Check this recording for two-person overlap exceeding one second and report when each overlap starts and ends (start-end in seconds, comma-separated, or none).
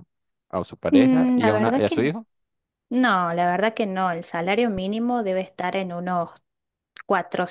0.9-2.1